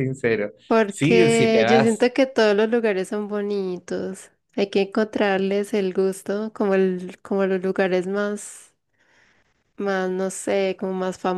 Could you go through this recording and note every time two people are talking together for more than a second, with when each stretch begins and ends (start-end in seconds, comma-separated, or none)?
0.9-2.1